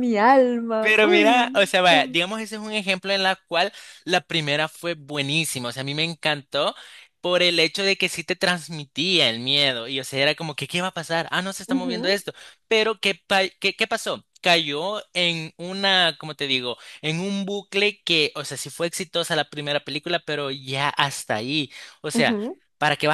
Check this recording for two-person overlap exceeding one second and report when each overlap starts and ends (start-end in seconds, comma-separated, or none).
0.8-2.2